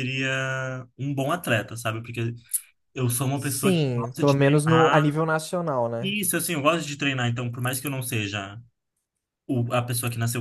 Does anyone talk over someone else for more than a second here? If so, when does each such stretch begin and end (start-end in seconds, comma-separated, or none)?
3.3-5.1